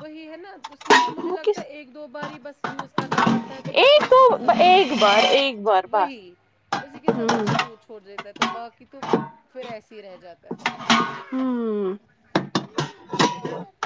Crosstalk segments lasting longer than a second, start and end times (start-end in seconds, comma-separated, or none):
3.7-6.1